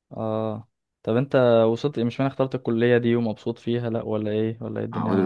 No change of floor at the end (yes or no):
no